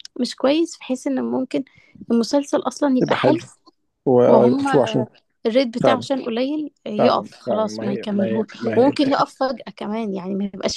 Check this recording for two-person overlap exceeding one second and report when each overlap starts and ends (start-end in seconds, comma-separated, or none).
7.0-8.9